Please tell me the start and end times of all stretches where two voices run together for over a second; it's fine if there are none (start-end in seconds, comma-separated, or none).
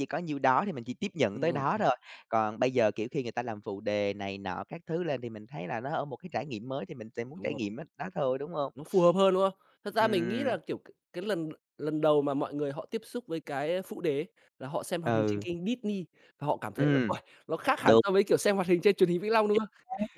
none